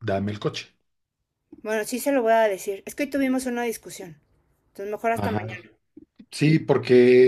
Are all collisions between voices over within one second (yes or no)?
yes